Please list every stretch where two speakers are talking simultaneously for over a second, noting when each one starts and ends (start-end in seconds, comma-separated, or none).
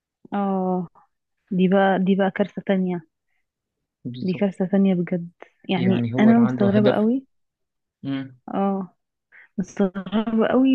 5.8-7.1